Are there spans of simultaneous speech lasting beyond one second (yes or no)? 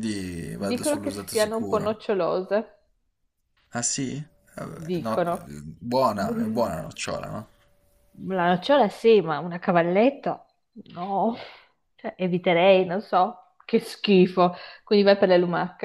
yes